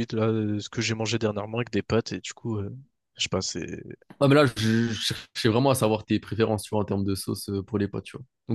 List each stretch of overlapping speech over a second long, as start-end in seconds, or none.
none